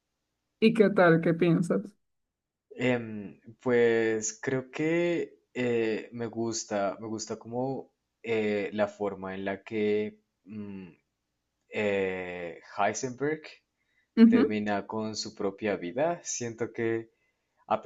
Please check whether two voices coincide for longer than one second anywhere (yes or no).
no